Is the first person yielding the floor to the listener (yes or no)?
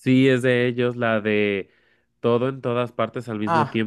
yes